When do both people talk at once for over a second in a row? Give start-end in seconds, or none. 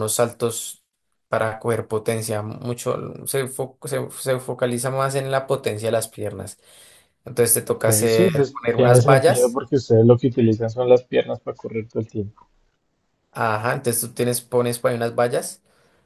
7.6-9.6